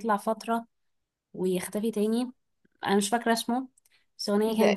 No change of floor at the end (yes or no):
yes